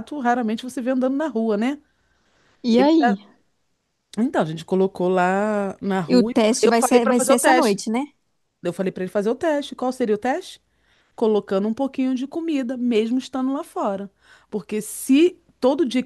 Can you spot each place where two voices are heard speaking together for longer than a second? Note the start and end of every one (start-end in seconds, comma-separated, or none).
6.1-7.8